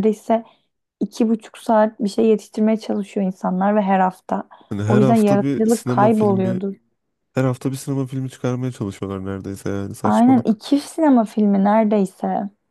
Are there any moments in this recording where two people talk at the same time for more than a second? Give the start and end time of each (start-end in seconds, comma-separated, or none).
4.9-6.6